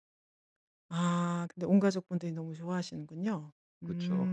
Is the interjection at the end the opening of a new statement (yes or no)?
yes